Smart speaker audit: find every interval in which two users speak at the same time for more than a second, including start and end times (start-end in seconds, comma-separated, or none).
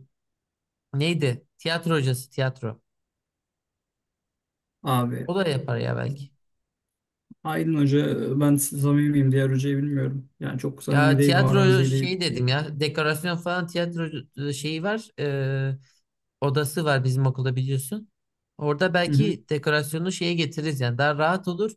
10.9-12.1